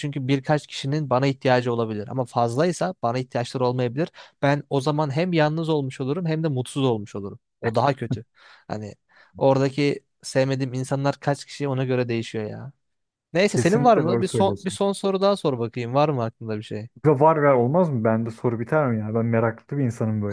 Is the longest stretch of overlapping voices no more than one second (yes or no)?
no